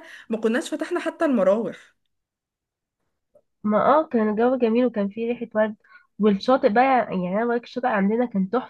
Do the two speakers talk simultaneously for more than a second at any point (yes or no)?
no